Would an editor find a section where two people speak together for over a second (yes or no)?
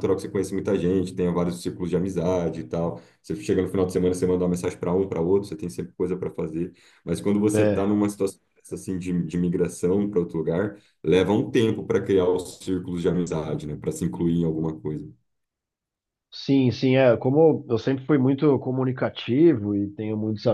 no